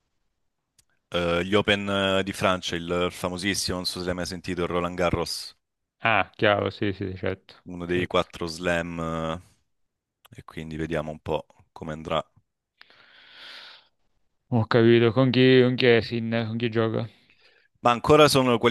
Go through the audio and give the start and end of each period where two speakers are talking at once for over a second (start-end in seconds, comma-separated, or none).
none